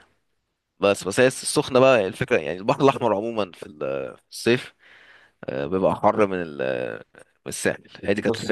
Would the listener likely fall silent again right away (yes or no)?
no